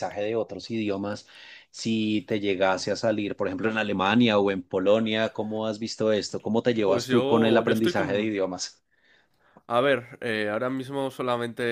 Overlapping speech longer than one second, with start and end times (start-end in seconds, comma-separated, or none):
6.8-8.4